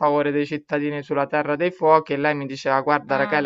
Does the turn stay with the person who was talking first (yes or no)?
yes